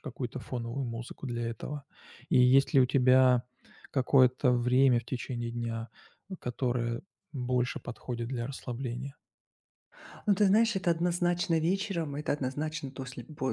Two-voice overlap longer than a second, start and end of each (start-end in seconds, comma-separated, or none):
none